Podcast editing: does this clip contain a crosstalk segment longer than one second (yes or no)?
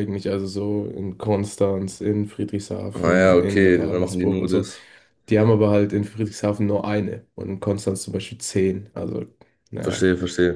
yes